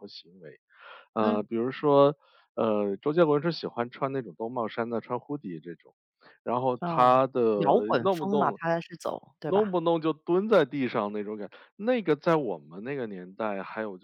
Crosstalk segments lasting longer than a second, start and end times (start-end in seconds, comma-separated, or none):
none